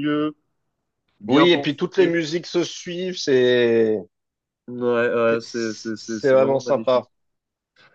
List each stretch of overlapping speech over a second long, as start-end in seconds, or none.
5.3-7.1